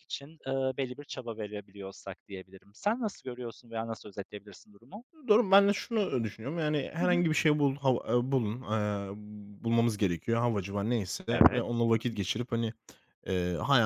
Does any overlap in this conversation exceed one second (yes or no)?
no